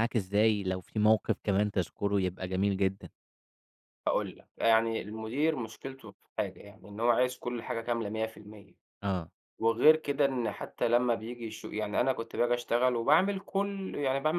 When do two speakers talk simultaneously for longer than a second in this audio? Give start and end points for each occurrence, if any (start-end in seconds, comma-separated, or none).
none